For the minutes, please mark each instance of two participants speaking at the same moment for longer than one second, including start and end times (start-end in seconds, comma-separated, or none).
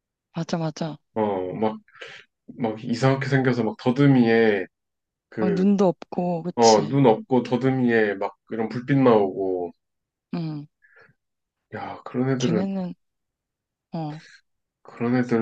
none